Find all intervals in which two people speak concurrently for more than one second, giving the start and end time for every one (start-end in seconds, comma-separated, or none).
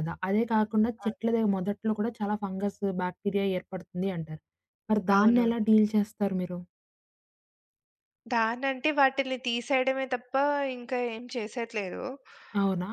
none